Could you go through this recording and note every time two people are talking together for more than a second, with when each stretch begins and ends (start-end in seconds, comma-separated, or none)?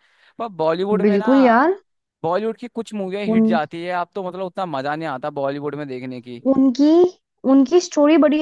none